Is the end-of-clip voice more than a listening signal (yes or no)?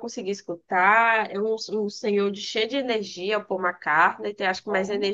no